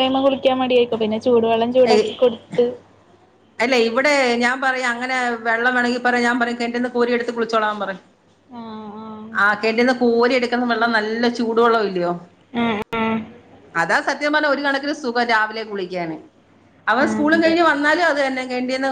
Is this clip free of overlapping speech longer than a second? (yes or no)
yes